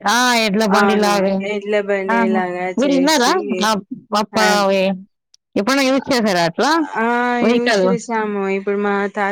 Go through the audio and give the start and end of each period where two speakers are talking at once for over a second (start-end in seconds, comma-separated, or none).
none